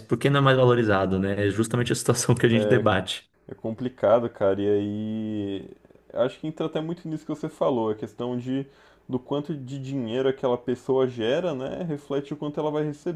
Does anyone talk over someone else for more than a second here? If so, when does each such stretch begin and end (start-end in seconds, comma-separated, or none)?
none